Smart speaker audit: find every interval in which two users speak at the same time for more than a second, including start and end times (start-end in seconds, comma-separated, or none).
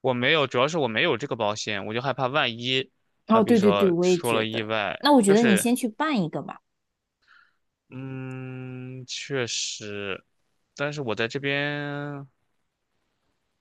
3.3-5.7